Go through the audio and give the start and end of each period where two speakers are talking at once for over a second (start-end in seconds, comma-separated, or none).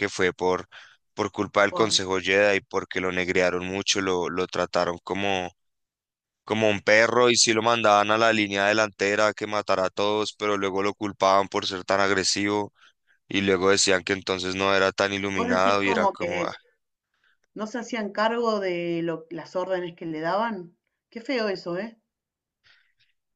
15.3-16.5